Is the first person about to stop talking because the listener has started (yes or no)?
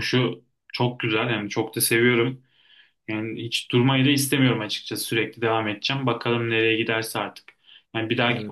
no